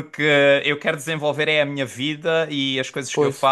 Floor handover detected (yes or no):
no